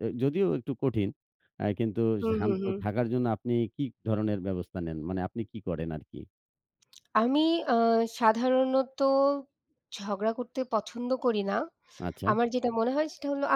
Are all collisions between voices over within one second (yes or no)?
yes